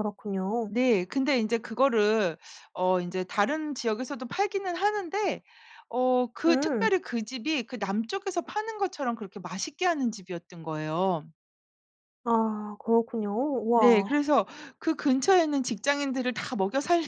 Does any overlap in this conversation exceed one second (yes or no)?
no